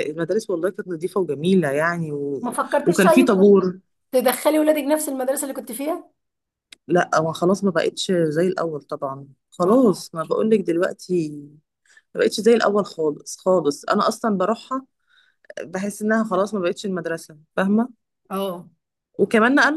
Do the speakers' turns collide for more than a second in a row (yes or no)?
no